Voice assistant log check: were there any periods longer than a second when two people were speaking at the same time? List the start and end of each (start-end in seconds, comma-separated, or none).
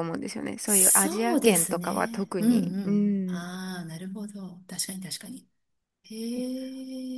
0.7-3.5